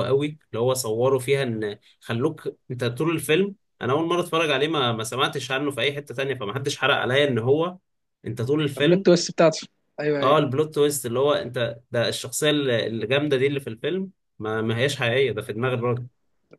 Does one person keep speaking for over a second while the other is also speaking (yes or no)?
no